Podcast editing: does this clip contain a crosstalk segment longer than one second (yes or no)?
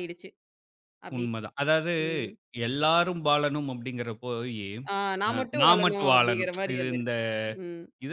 yes